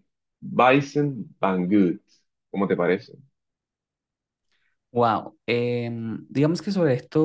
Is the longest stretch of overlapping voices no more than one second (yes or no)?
yes